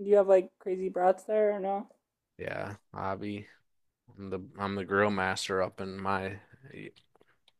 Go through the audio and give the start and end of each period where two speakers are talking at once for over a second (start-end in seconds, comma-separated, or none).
none